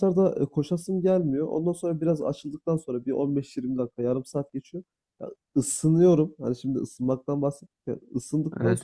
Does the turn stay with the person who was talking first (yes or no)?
yes